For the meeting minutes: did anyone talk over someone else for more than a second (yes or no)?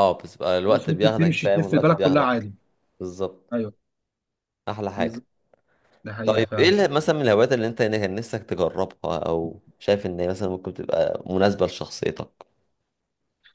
yes